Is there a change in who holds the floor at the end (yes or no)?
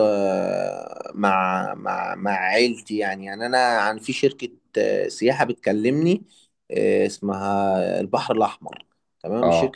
no